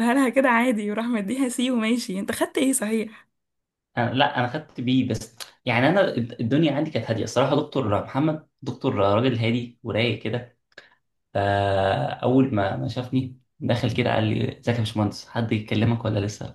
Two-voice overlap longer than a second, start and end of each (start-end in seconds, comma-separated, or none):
none